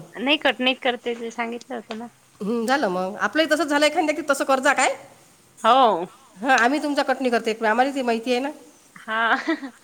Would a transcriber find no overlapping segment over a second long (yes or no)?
yes